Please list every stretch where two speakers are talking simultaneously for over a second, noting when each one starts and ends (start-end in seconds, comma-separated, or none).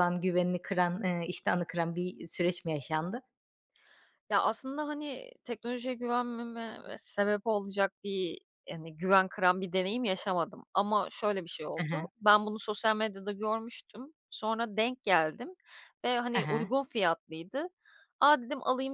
none